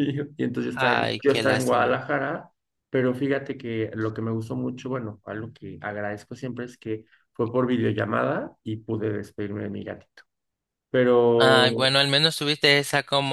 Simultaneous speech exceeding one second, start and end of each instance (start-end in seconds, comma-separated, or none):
0.7-2.0